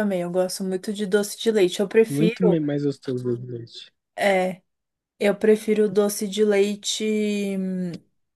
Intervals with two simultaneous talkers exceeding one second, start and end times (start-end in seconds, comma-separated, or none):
none